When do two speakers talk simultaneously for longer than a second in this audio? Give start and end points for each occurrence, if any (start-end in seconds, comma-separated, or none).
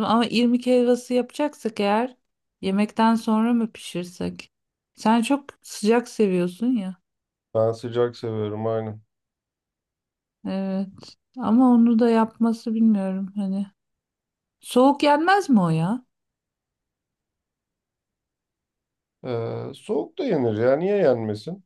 none